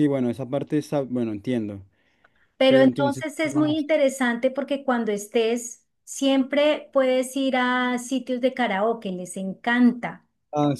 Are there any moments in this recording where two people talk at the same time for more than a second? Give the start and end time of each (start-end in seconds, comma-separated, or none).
2.7-3.9